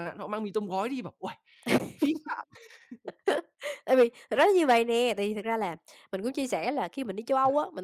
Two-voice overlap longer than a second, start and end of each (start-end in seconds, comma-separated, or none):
none